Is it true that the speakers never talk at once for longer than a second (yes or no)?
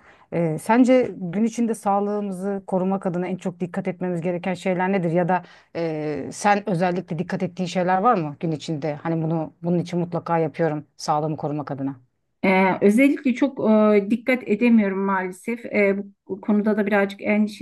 yes